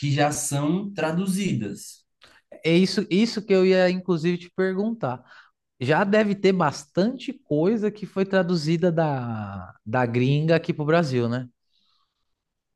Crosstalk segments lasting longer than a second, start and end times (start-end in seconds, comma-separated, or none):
none